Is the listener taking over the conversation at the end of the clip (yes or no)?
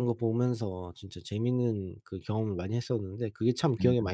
yes